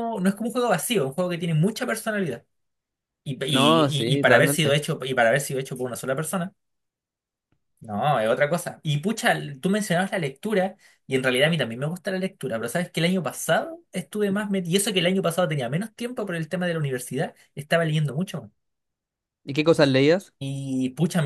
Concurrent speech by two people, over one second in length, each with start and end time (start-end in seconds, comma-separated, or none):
3.5-4.8